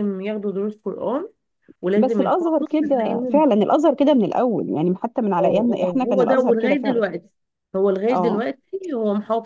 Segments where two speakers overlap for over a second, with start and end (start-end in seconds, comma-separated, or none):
2.0-3.5, 5.4-7.0